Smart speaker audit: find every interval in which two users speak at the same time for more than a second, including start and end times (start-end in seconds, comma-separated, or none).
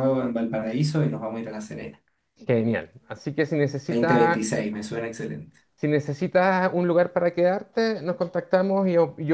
none